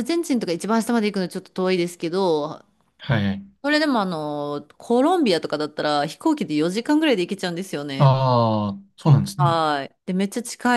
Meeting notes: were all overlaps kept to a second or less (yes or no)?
yes